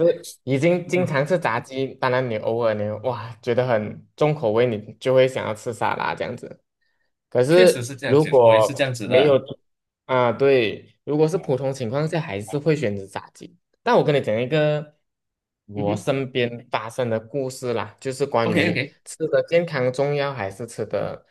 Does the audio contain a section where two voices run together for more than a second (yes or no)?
yes